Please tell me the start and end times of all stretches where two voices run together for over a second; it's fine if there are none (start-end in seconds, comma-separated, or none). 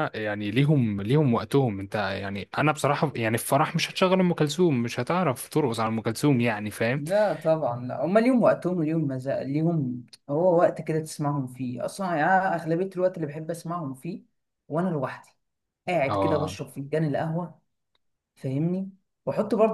none